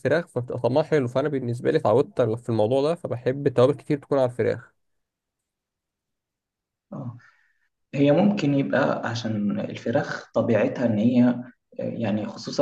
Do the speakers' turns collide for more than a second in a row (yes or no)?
no